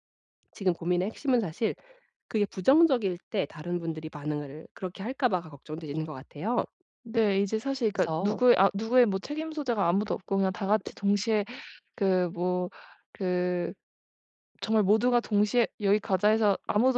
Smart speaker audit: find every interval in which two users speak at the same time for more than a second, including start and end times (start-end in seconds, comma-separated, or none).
none